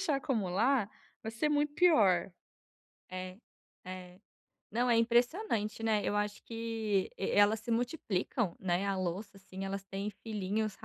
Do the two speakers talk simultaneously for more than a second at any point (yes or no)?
no